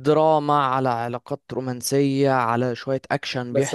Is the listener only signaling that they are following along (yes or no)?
no